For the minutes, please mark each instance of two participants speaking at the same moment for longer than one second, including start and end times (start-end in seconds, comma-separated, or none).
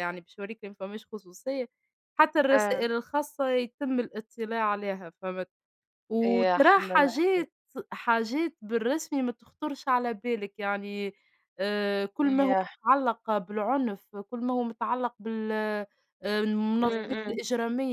6.2-7.5